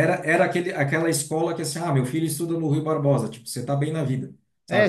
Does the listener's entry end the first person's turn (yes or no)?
yes